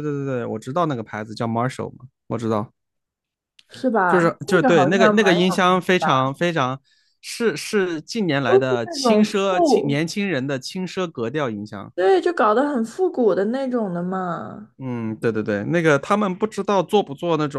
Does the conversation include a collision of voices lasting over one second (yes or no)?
yes